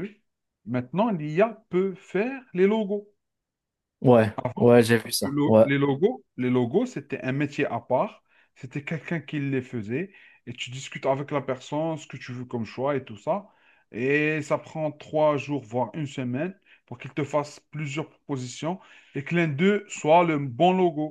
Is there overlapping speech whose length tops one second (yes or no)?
no